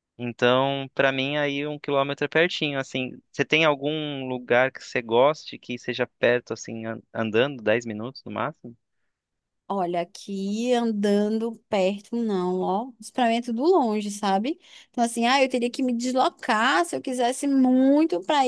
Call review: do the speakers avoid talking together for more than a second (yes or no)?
yes